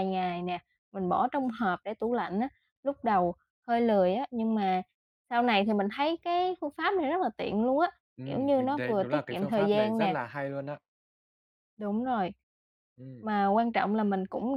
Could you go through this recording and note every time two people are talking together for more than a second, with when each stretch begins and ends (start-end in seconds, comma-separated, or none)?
8.2-10.2